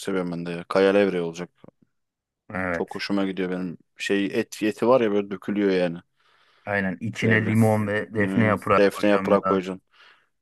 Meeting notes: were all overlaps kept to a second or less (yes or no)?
no